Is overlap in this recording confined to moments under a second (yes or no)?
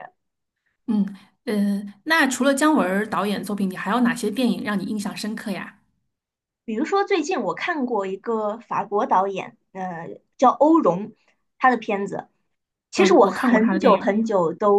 no